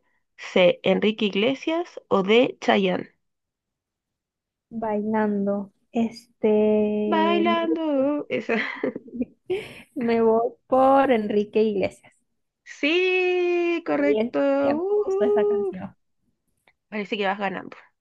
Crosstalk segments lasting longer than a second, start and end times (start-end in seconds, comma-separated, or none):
13.9-15.7